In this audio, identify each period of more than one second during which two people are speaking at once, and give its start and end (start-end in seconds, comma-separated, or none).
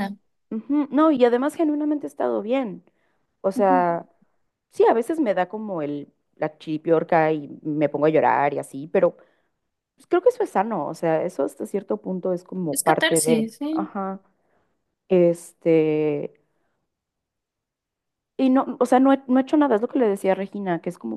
12.7-13.9